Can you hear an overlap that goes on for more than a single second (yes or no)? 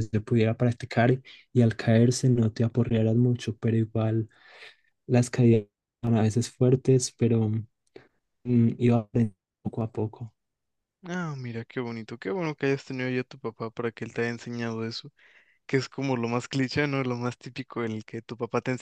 no